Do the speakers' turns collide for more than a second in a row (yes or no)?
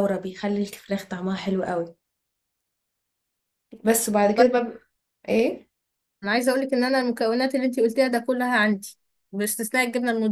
no